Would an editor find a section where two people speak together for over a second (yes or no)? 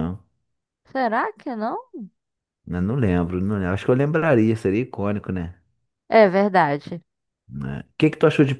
no